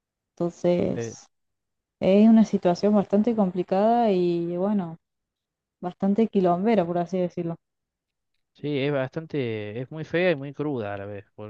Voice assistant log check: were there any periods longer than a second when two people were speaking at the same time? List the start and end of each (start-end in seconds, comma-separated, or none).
none